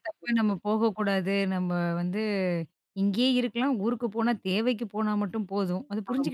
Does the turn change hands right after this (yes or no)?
yes